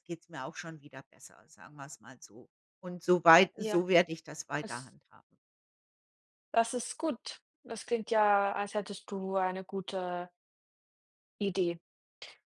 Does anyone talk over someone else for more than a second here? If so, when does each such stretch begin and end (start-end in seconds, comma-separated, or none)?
none